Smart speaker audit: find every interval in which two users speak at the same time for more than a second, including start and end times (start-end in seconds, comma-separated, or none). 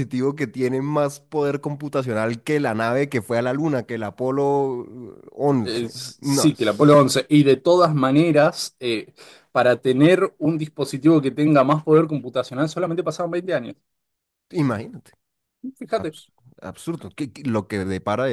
5.6-7.2